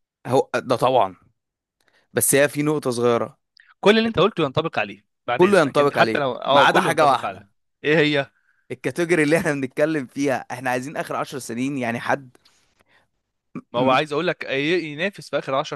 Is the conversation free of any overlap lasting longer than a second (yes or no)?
no